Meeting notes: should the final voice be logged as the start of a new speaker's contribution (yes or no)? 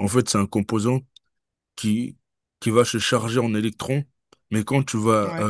no